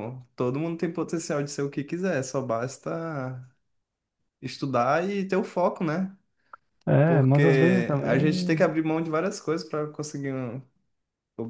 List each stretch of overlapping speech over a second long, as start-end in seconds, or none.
7.0-8.7